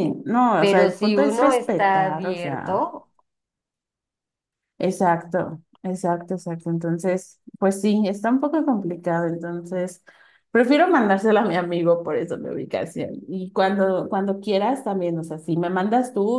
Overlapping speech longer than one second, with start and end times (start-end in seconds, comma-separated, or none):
0.6-2.9